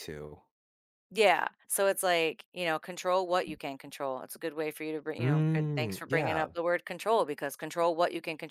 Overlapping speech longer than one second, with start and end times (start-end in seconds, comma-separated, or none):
5.2-6.5